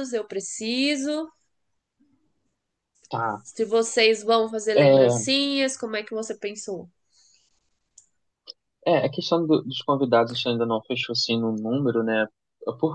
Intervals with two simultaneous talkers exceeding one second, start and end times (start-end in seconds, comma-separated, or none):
none